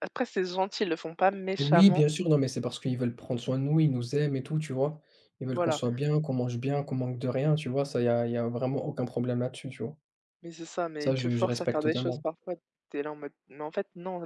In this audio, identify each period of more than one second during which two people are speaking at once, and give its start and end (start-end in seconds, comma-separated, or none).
11.0-12.2